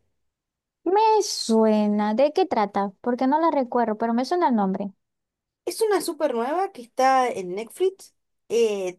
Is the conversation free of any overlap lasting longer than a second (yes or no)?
yes